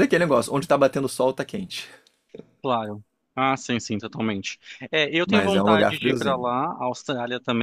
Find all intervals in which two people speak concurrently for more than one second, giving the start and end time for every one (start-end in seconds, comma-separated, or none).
5.2-6.5